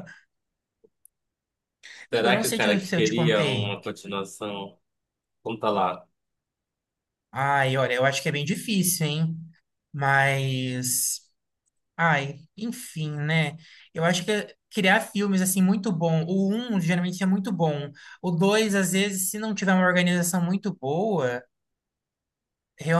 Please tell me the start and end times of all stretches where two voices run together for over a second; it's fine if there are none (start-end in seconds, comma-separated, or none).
2.1-3.8